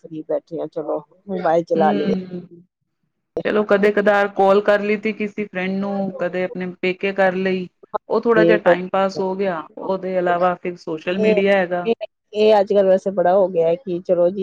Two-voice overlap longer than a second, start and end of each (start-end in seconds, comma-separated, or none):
none